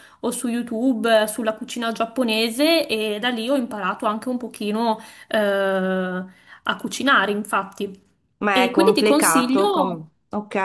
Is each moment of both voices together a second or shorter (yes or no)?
no